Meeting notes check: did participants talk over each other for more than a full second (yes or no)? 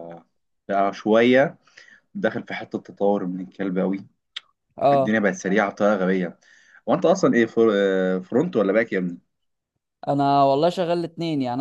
no